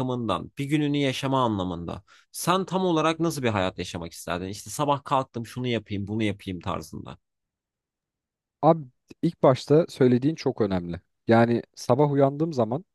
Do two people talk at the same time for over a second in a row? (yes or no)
no